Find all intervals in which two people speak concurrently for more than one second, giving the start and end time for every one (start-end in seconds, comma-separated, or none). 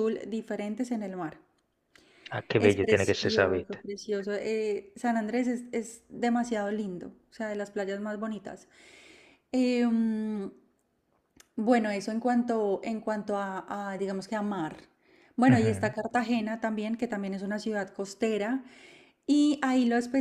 2.6-3.8